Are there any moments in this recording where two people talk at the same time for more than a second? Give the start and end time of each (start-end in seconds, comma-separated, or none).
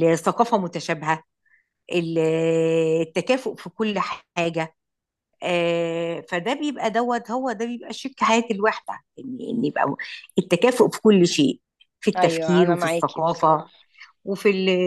12.2-13.6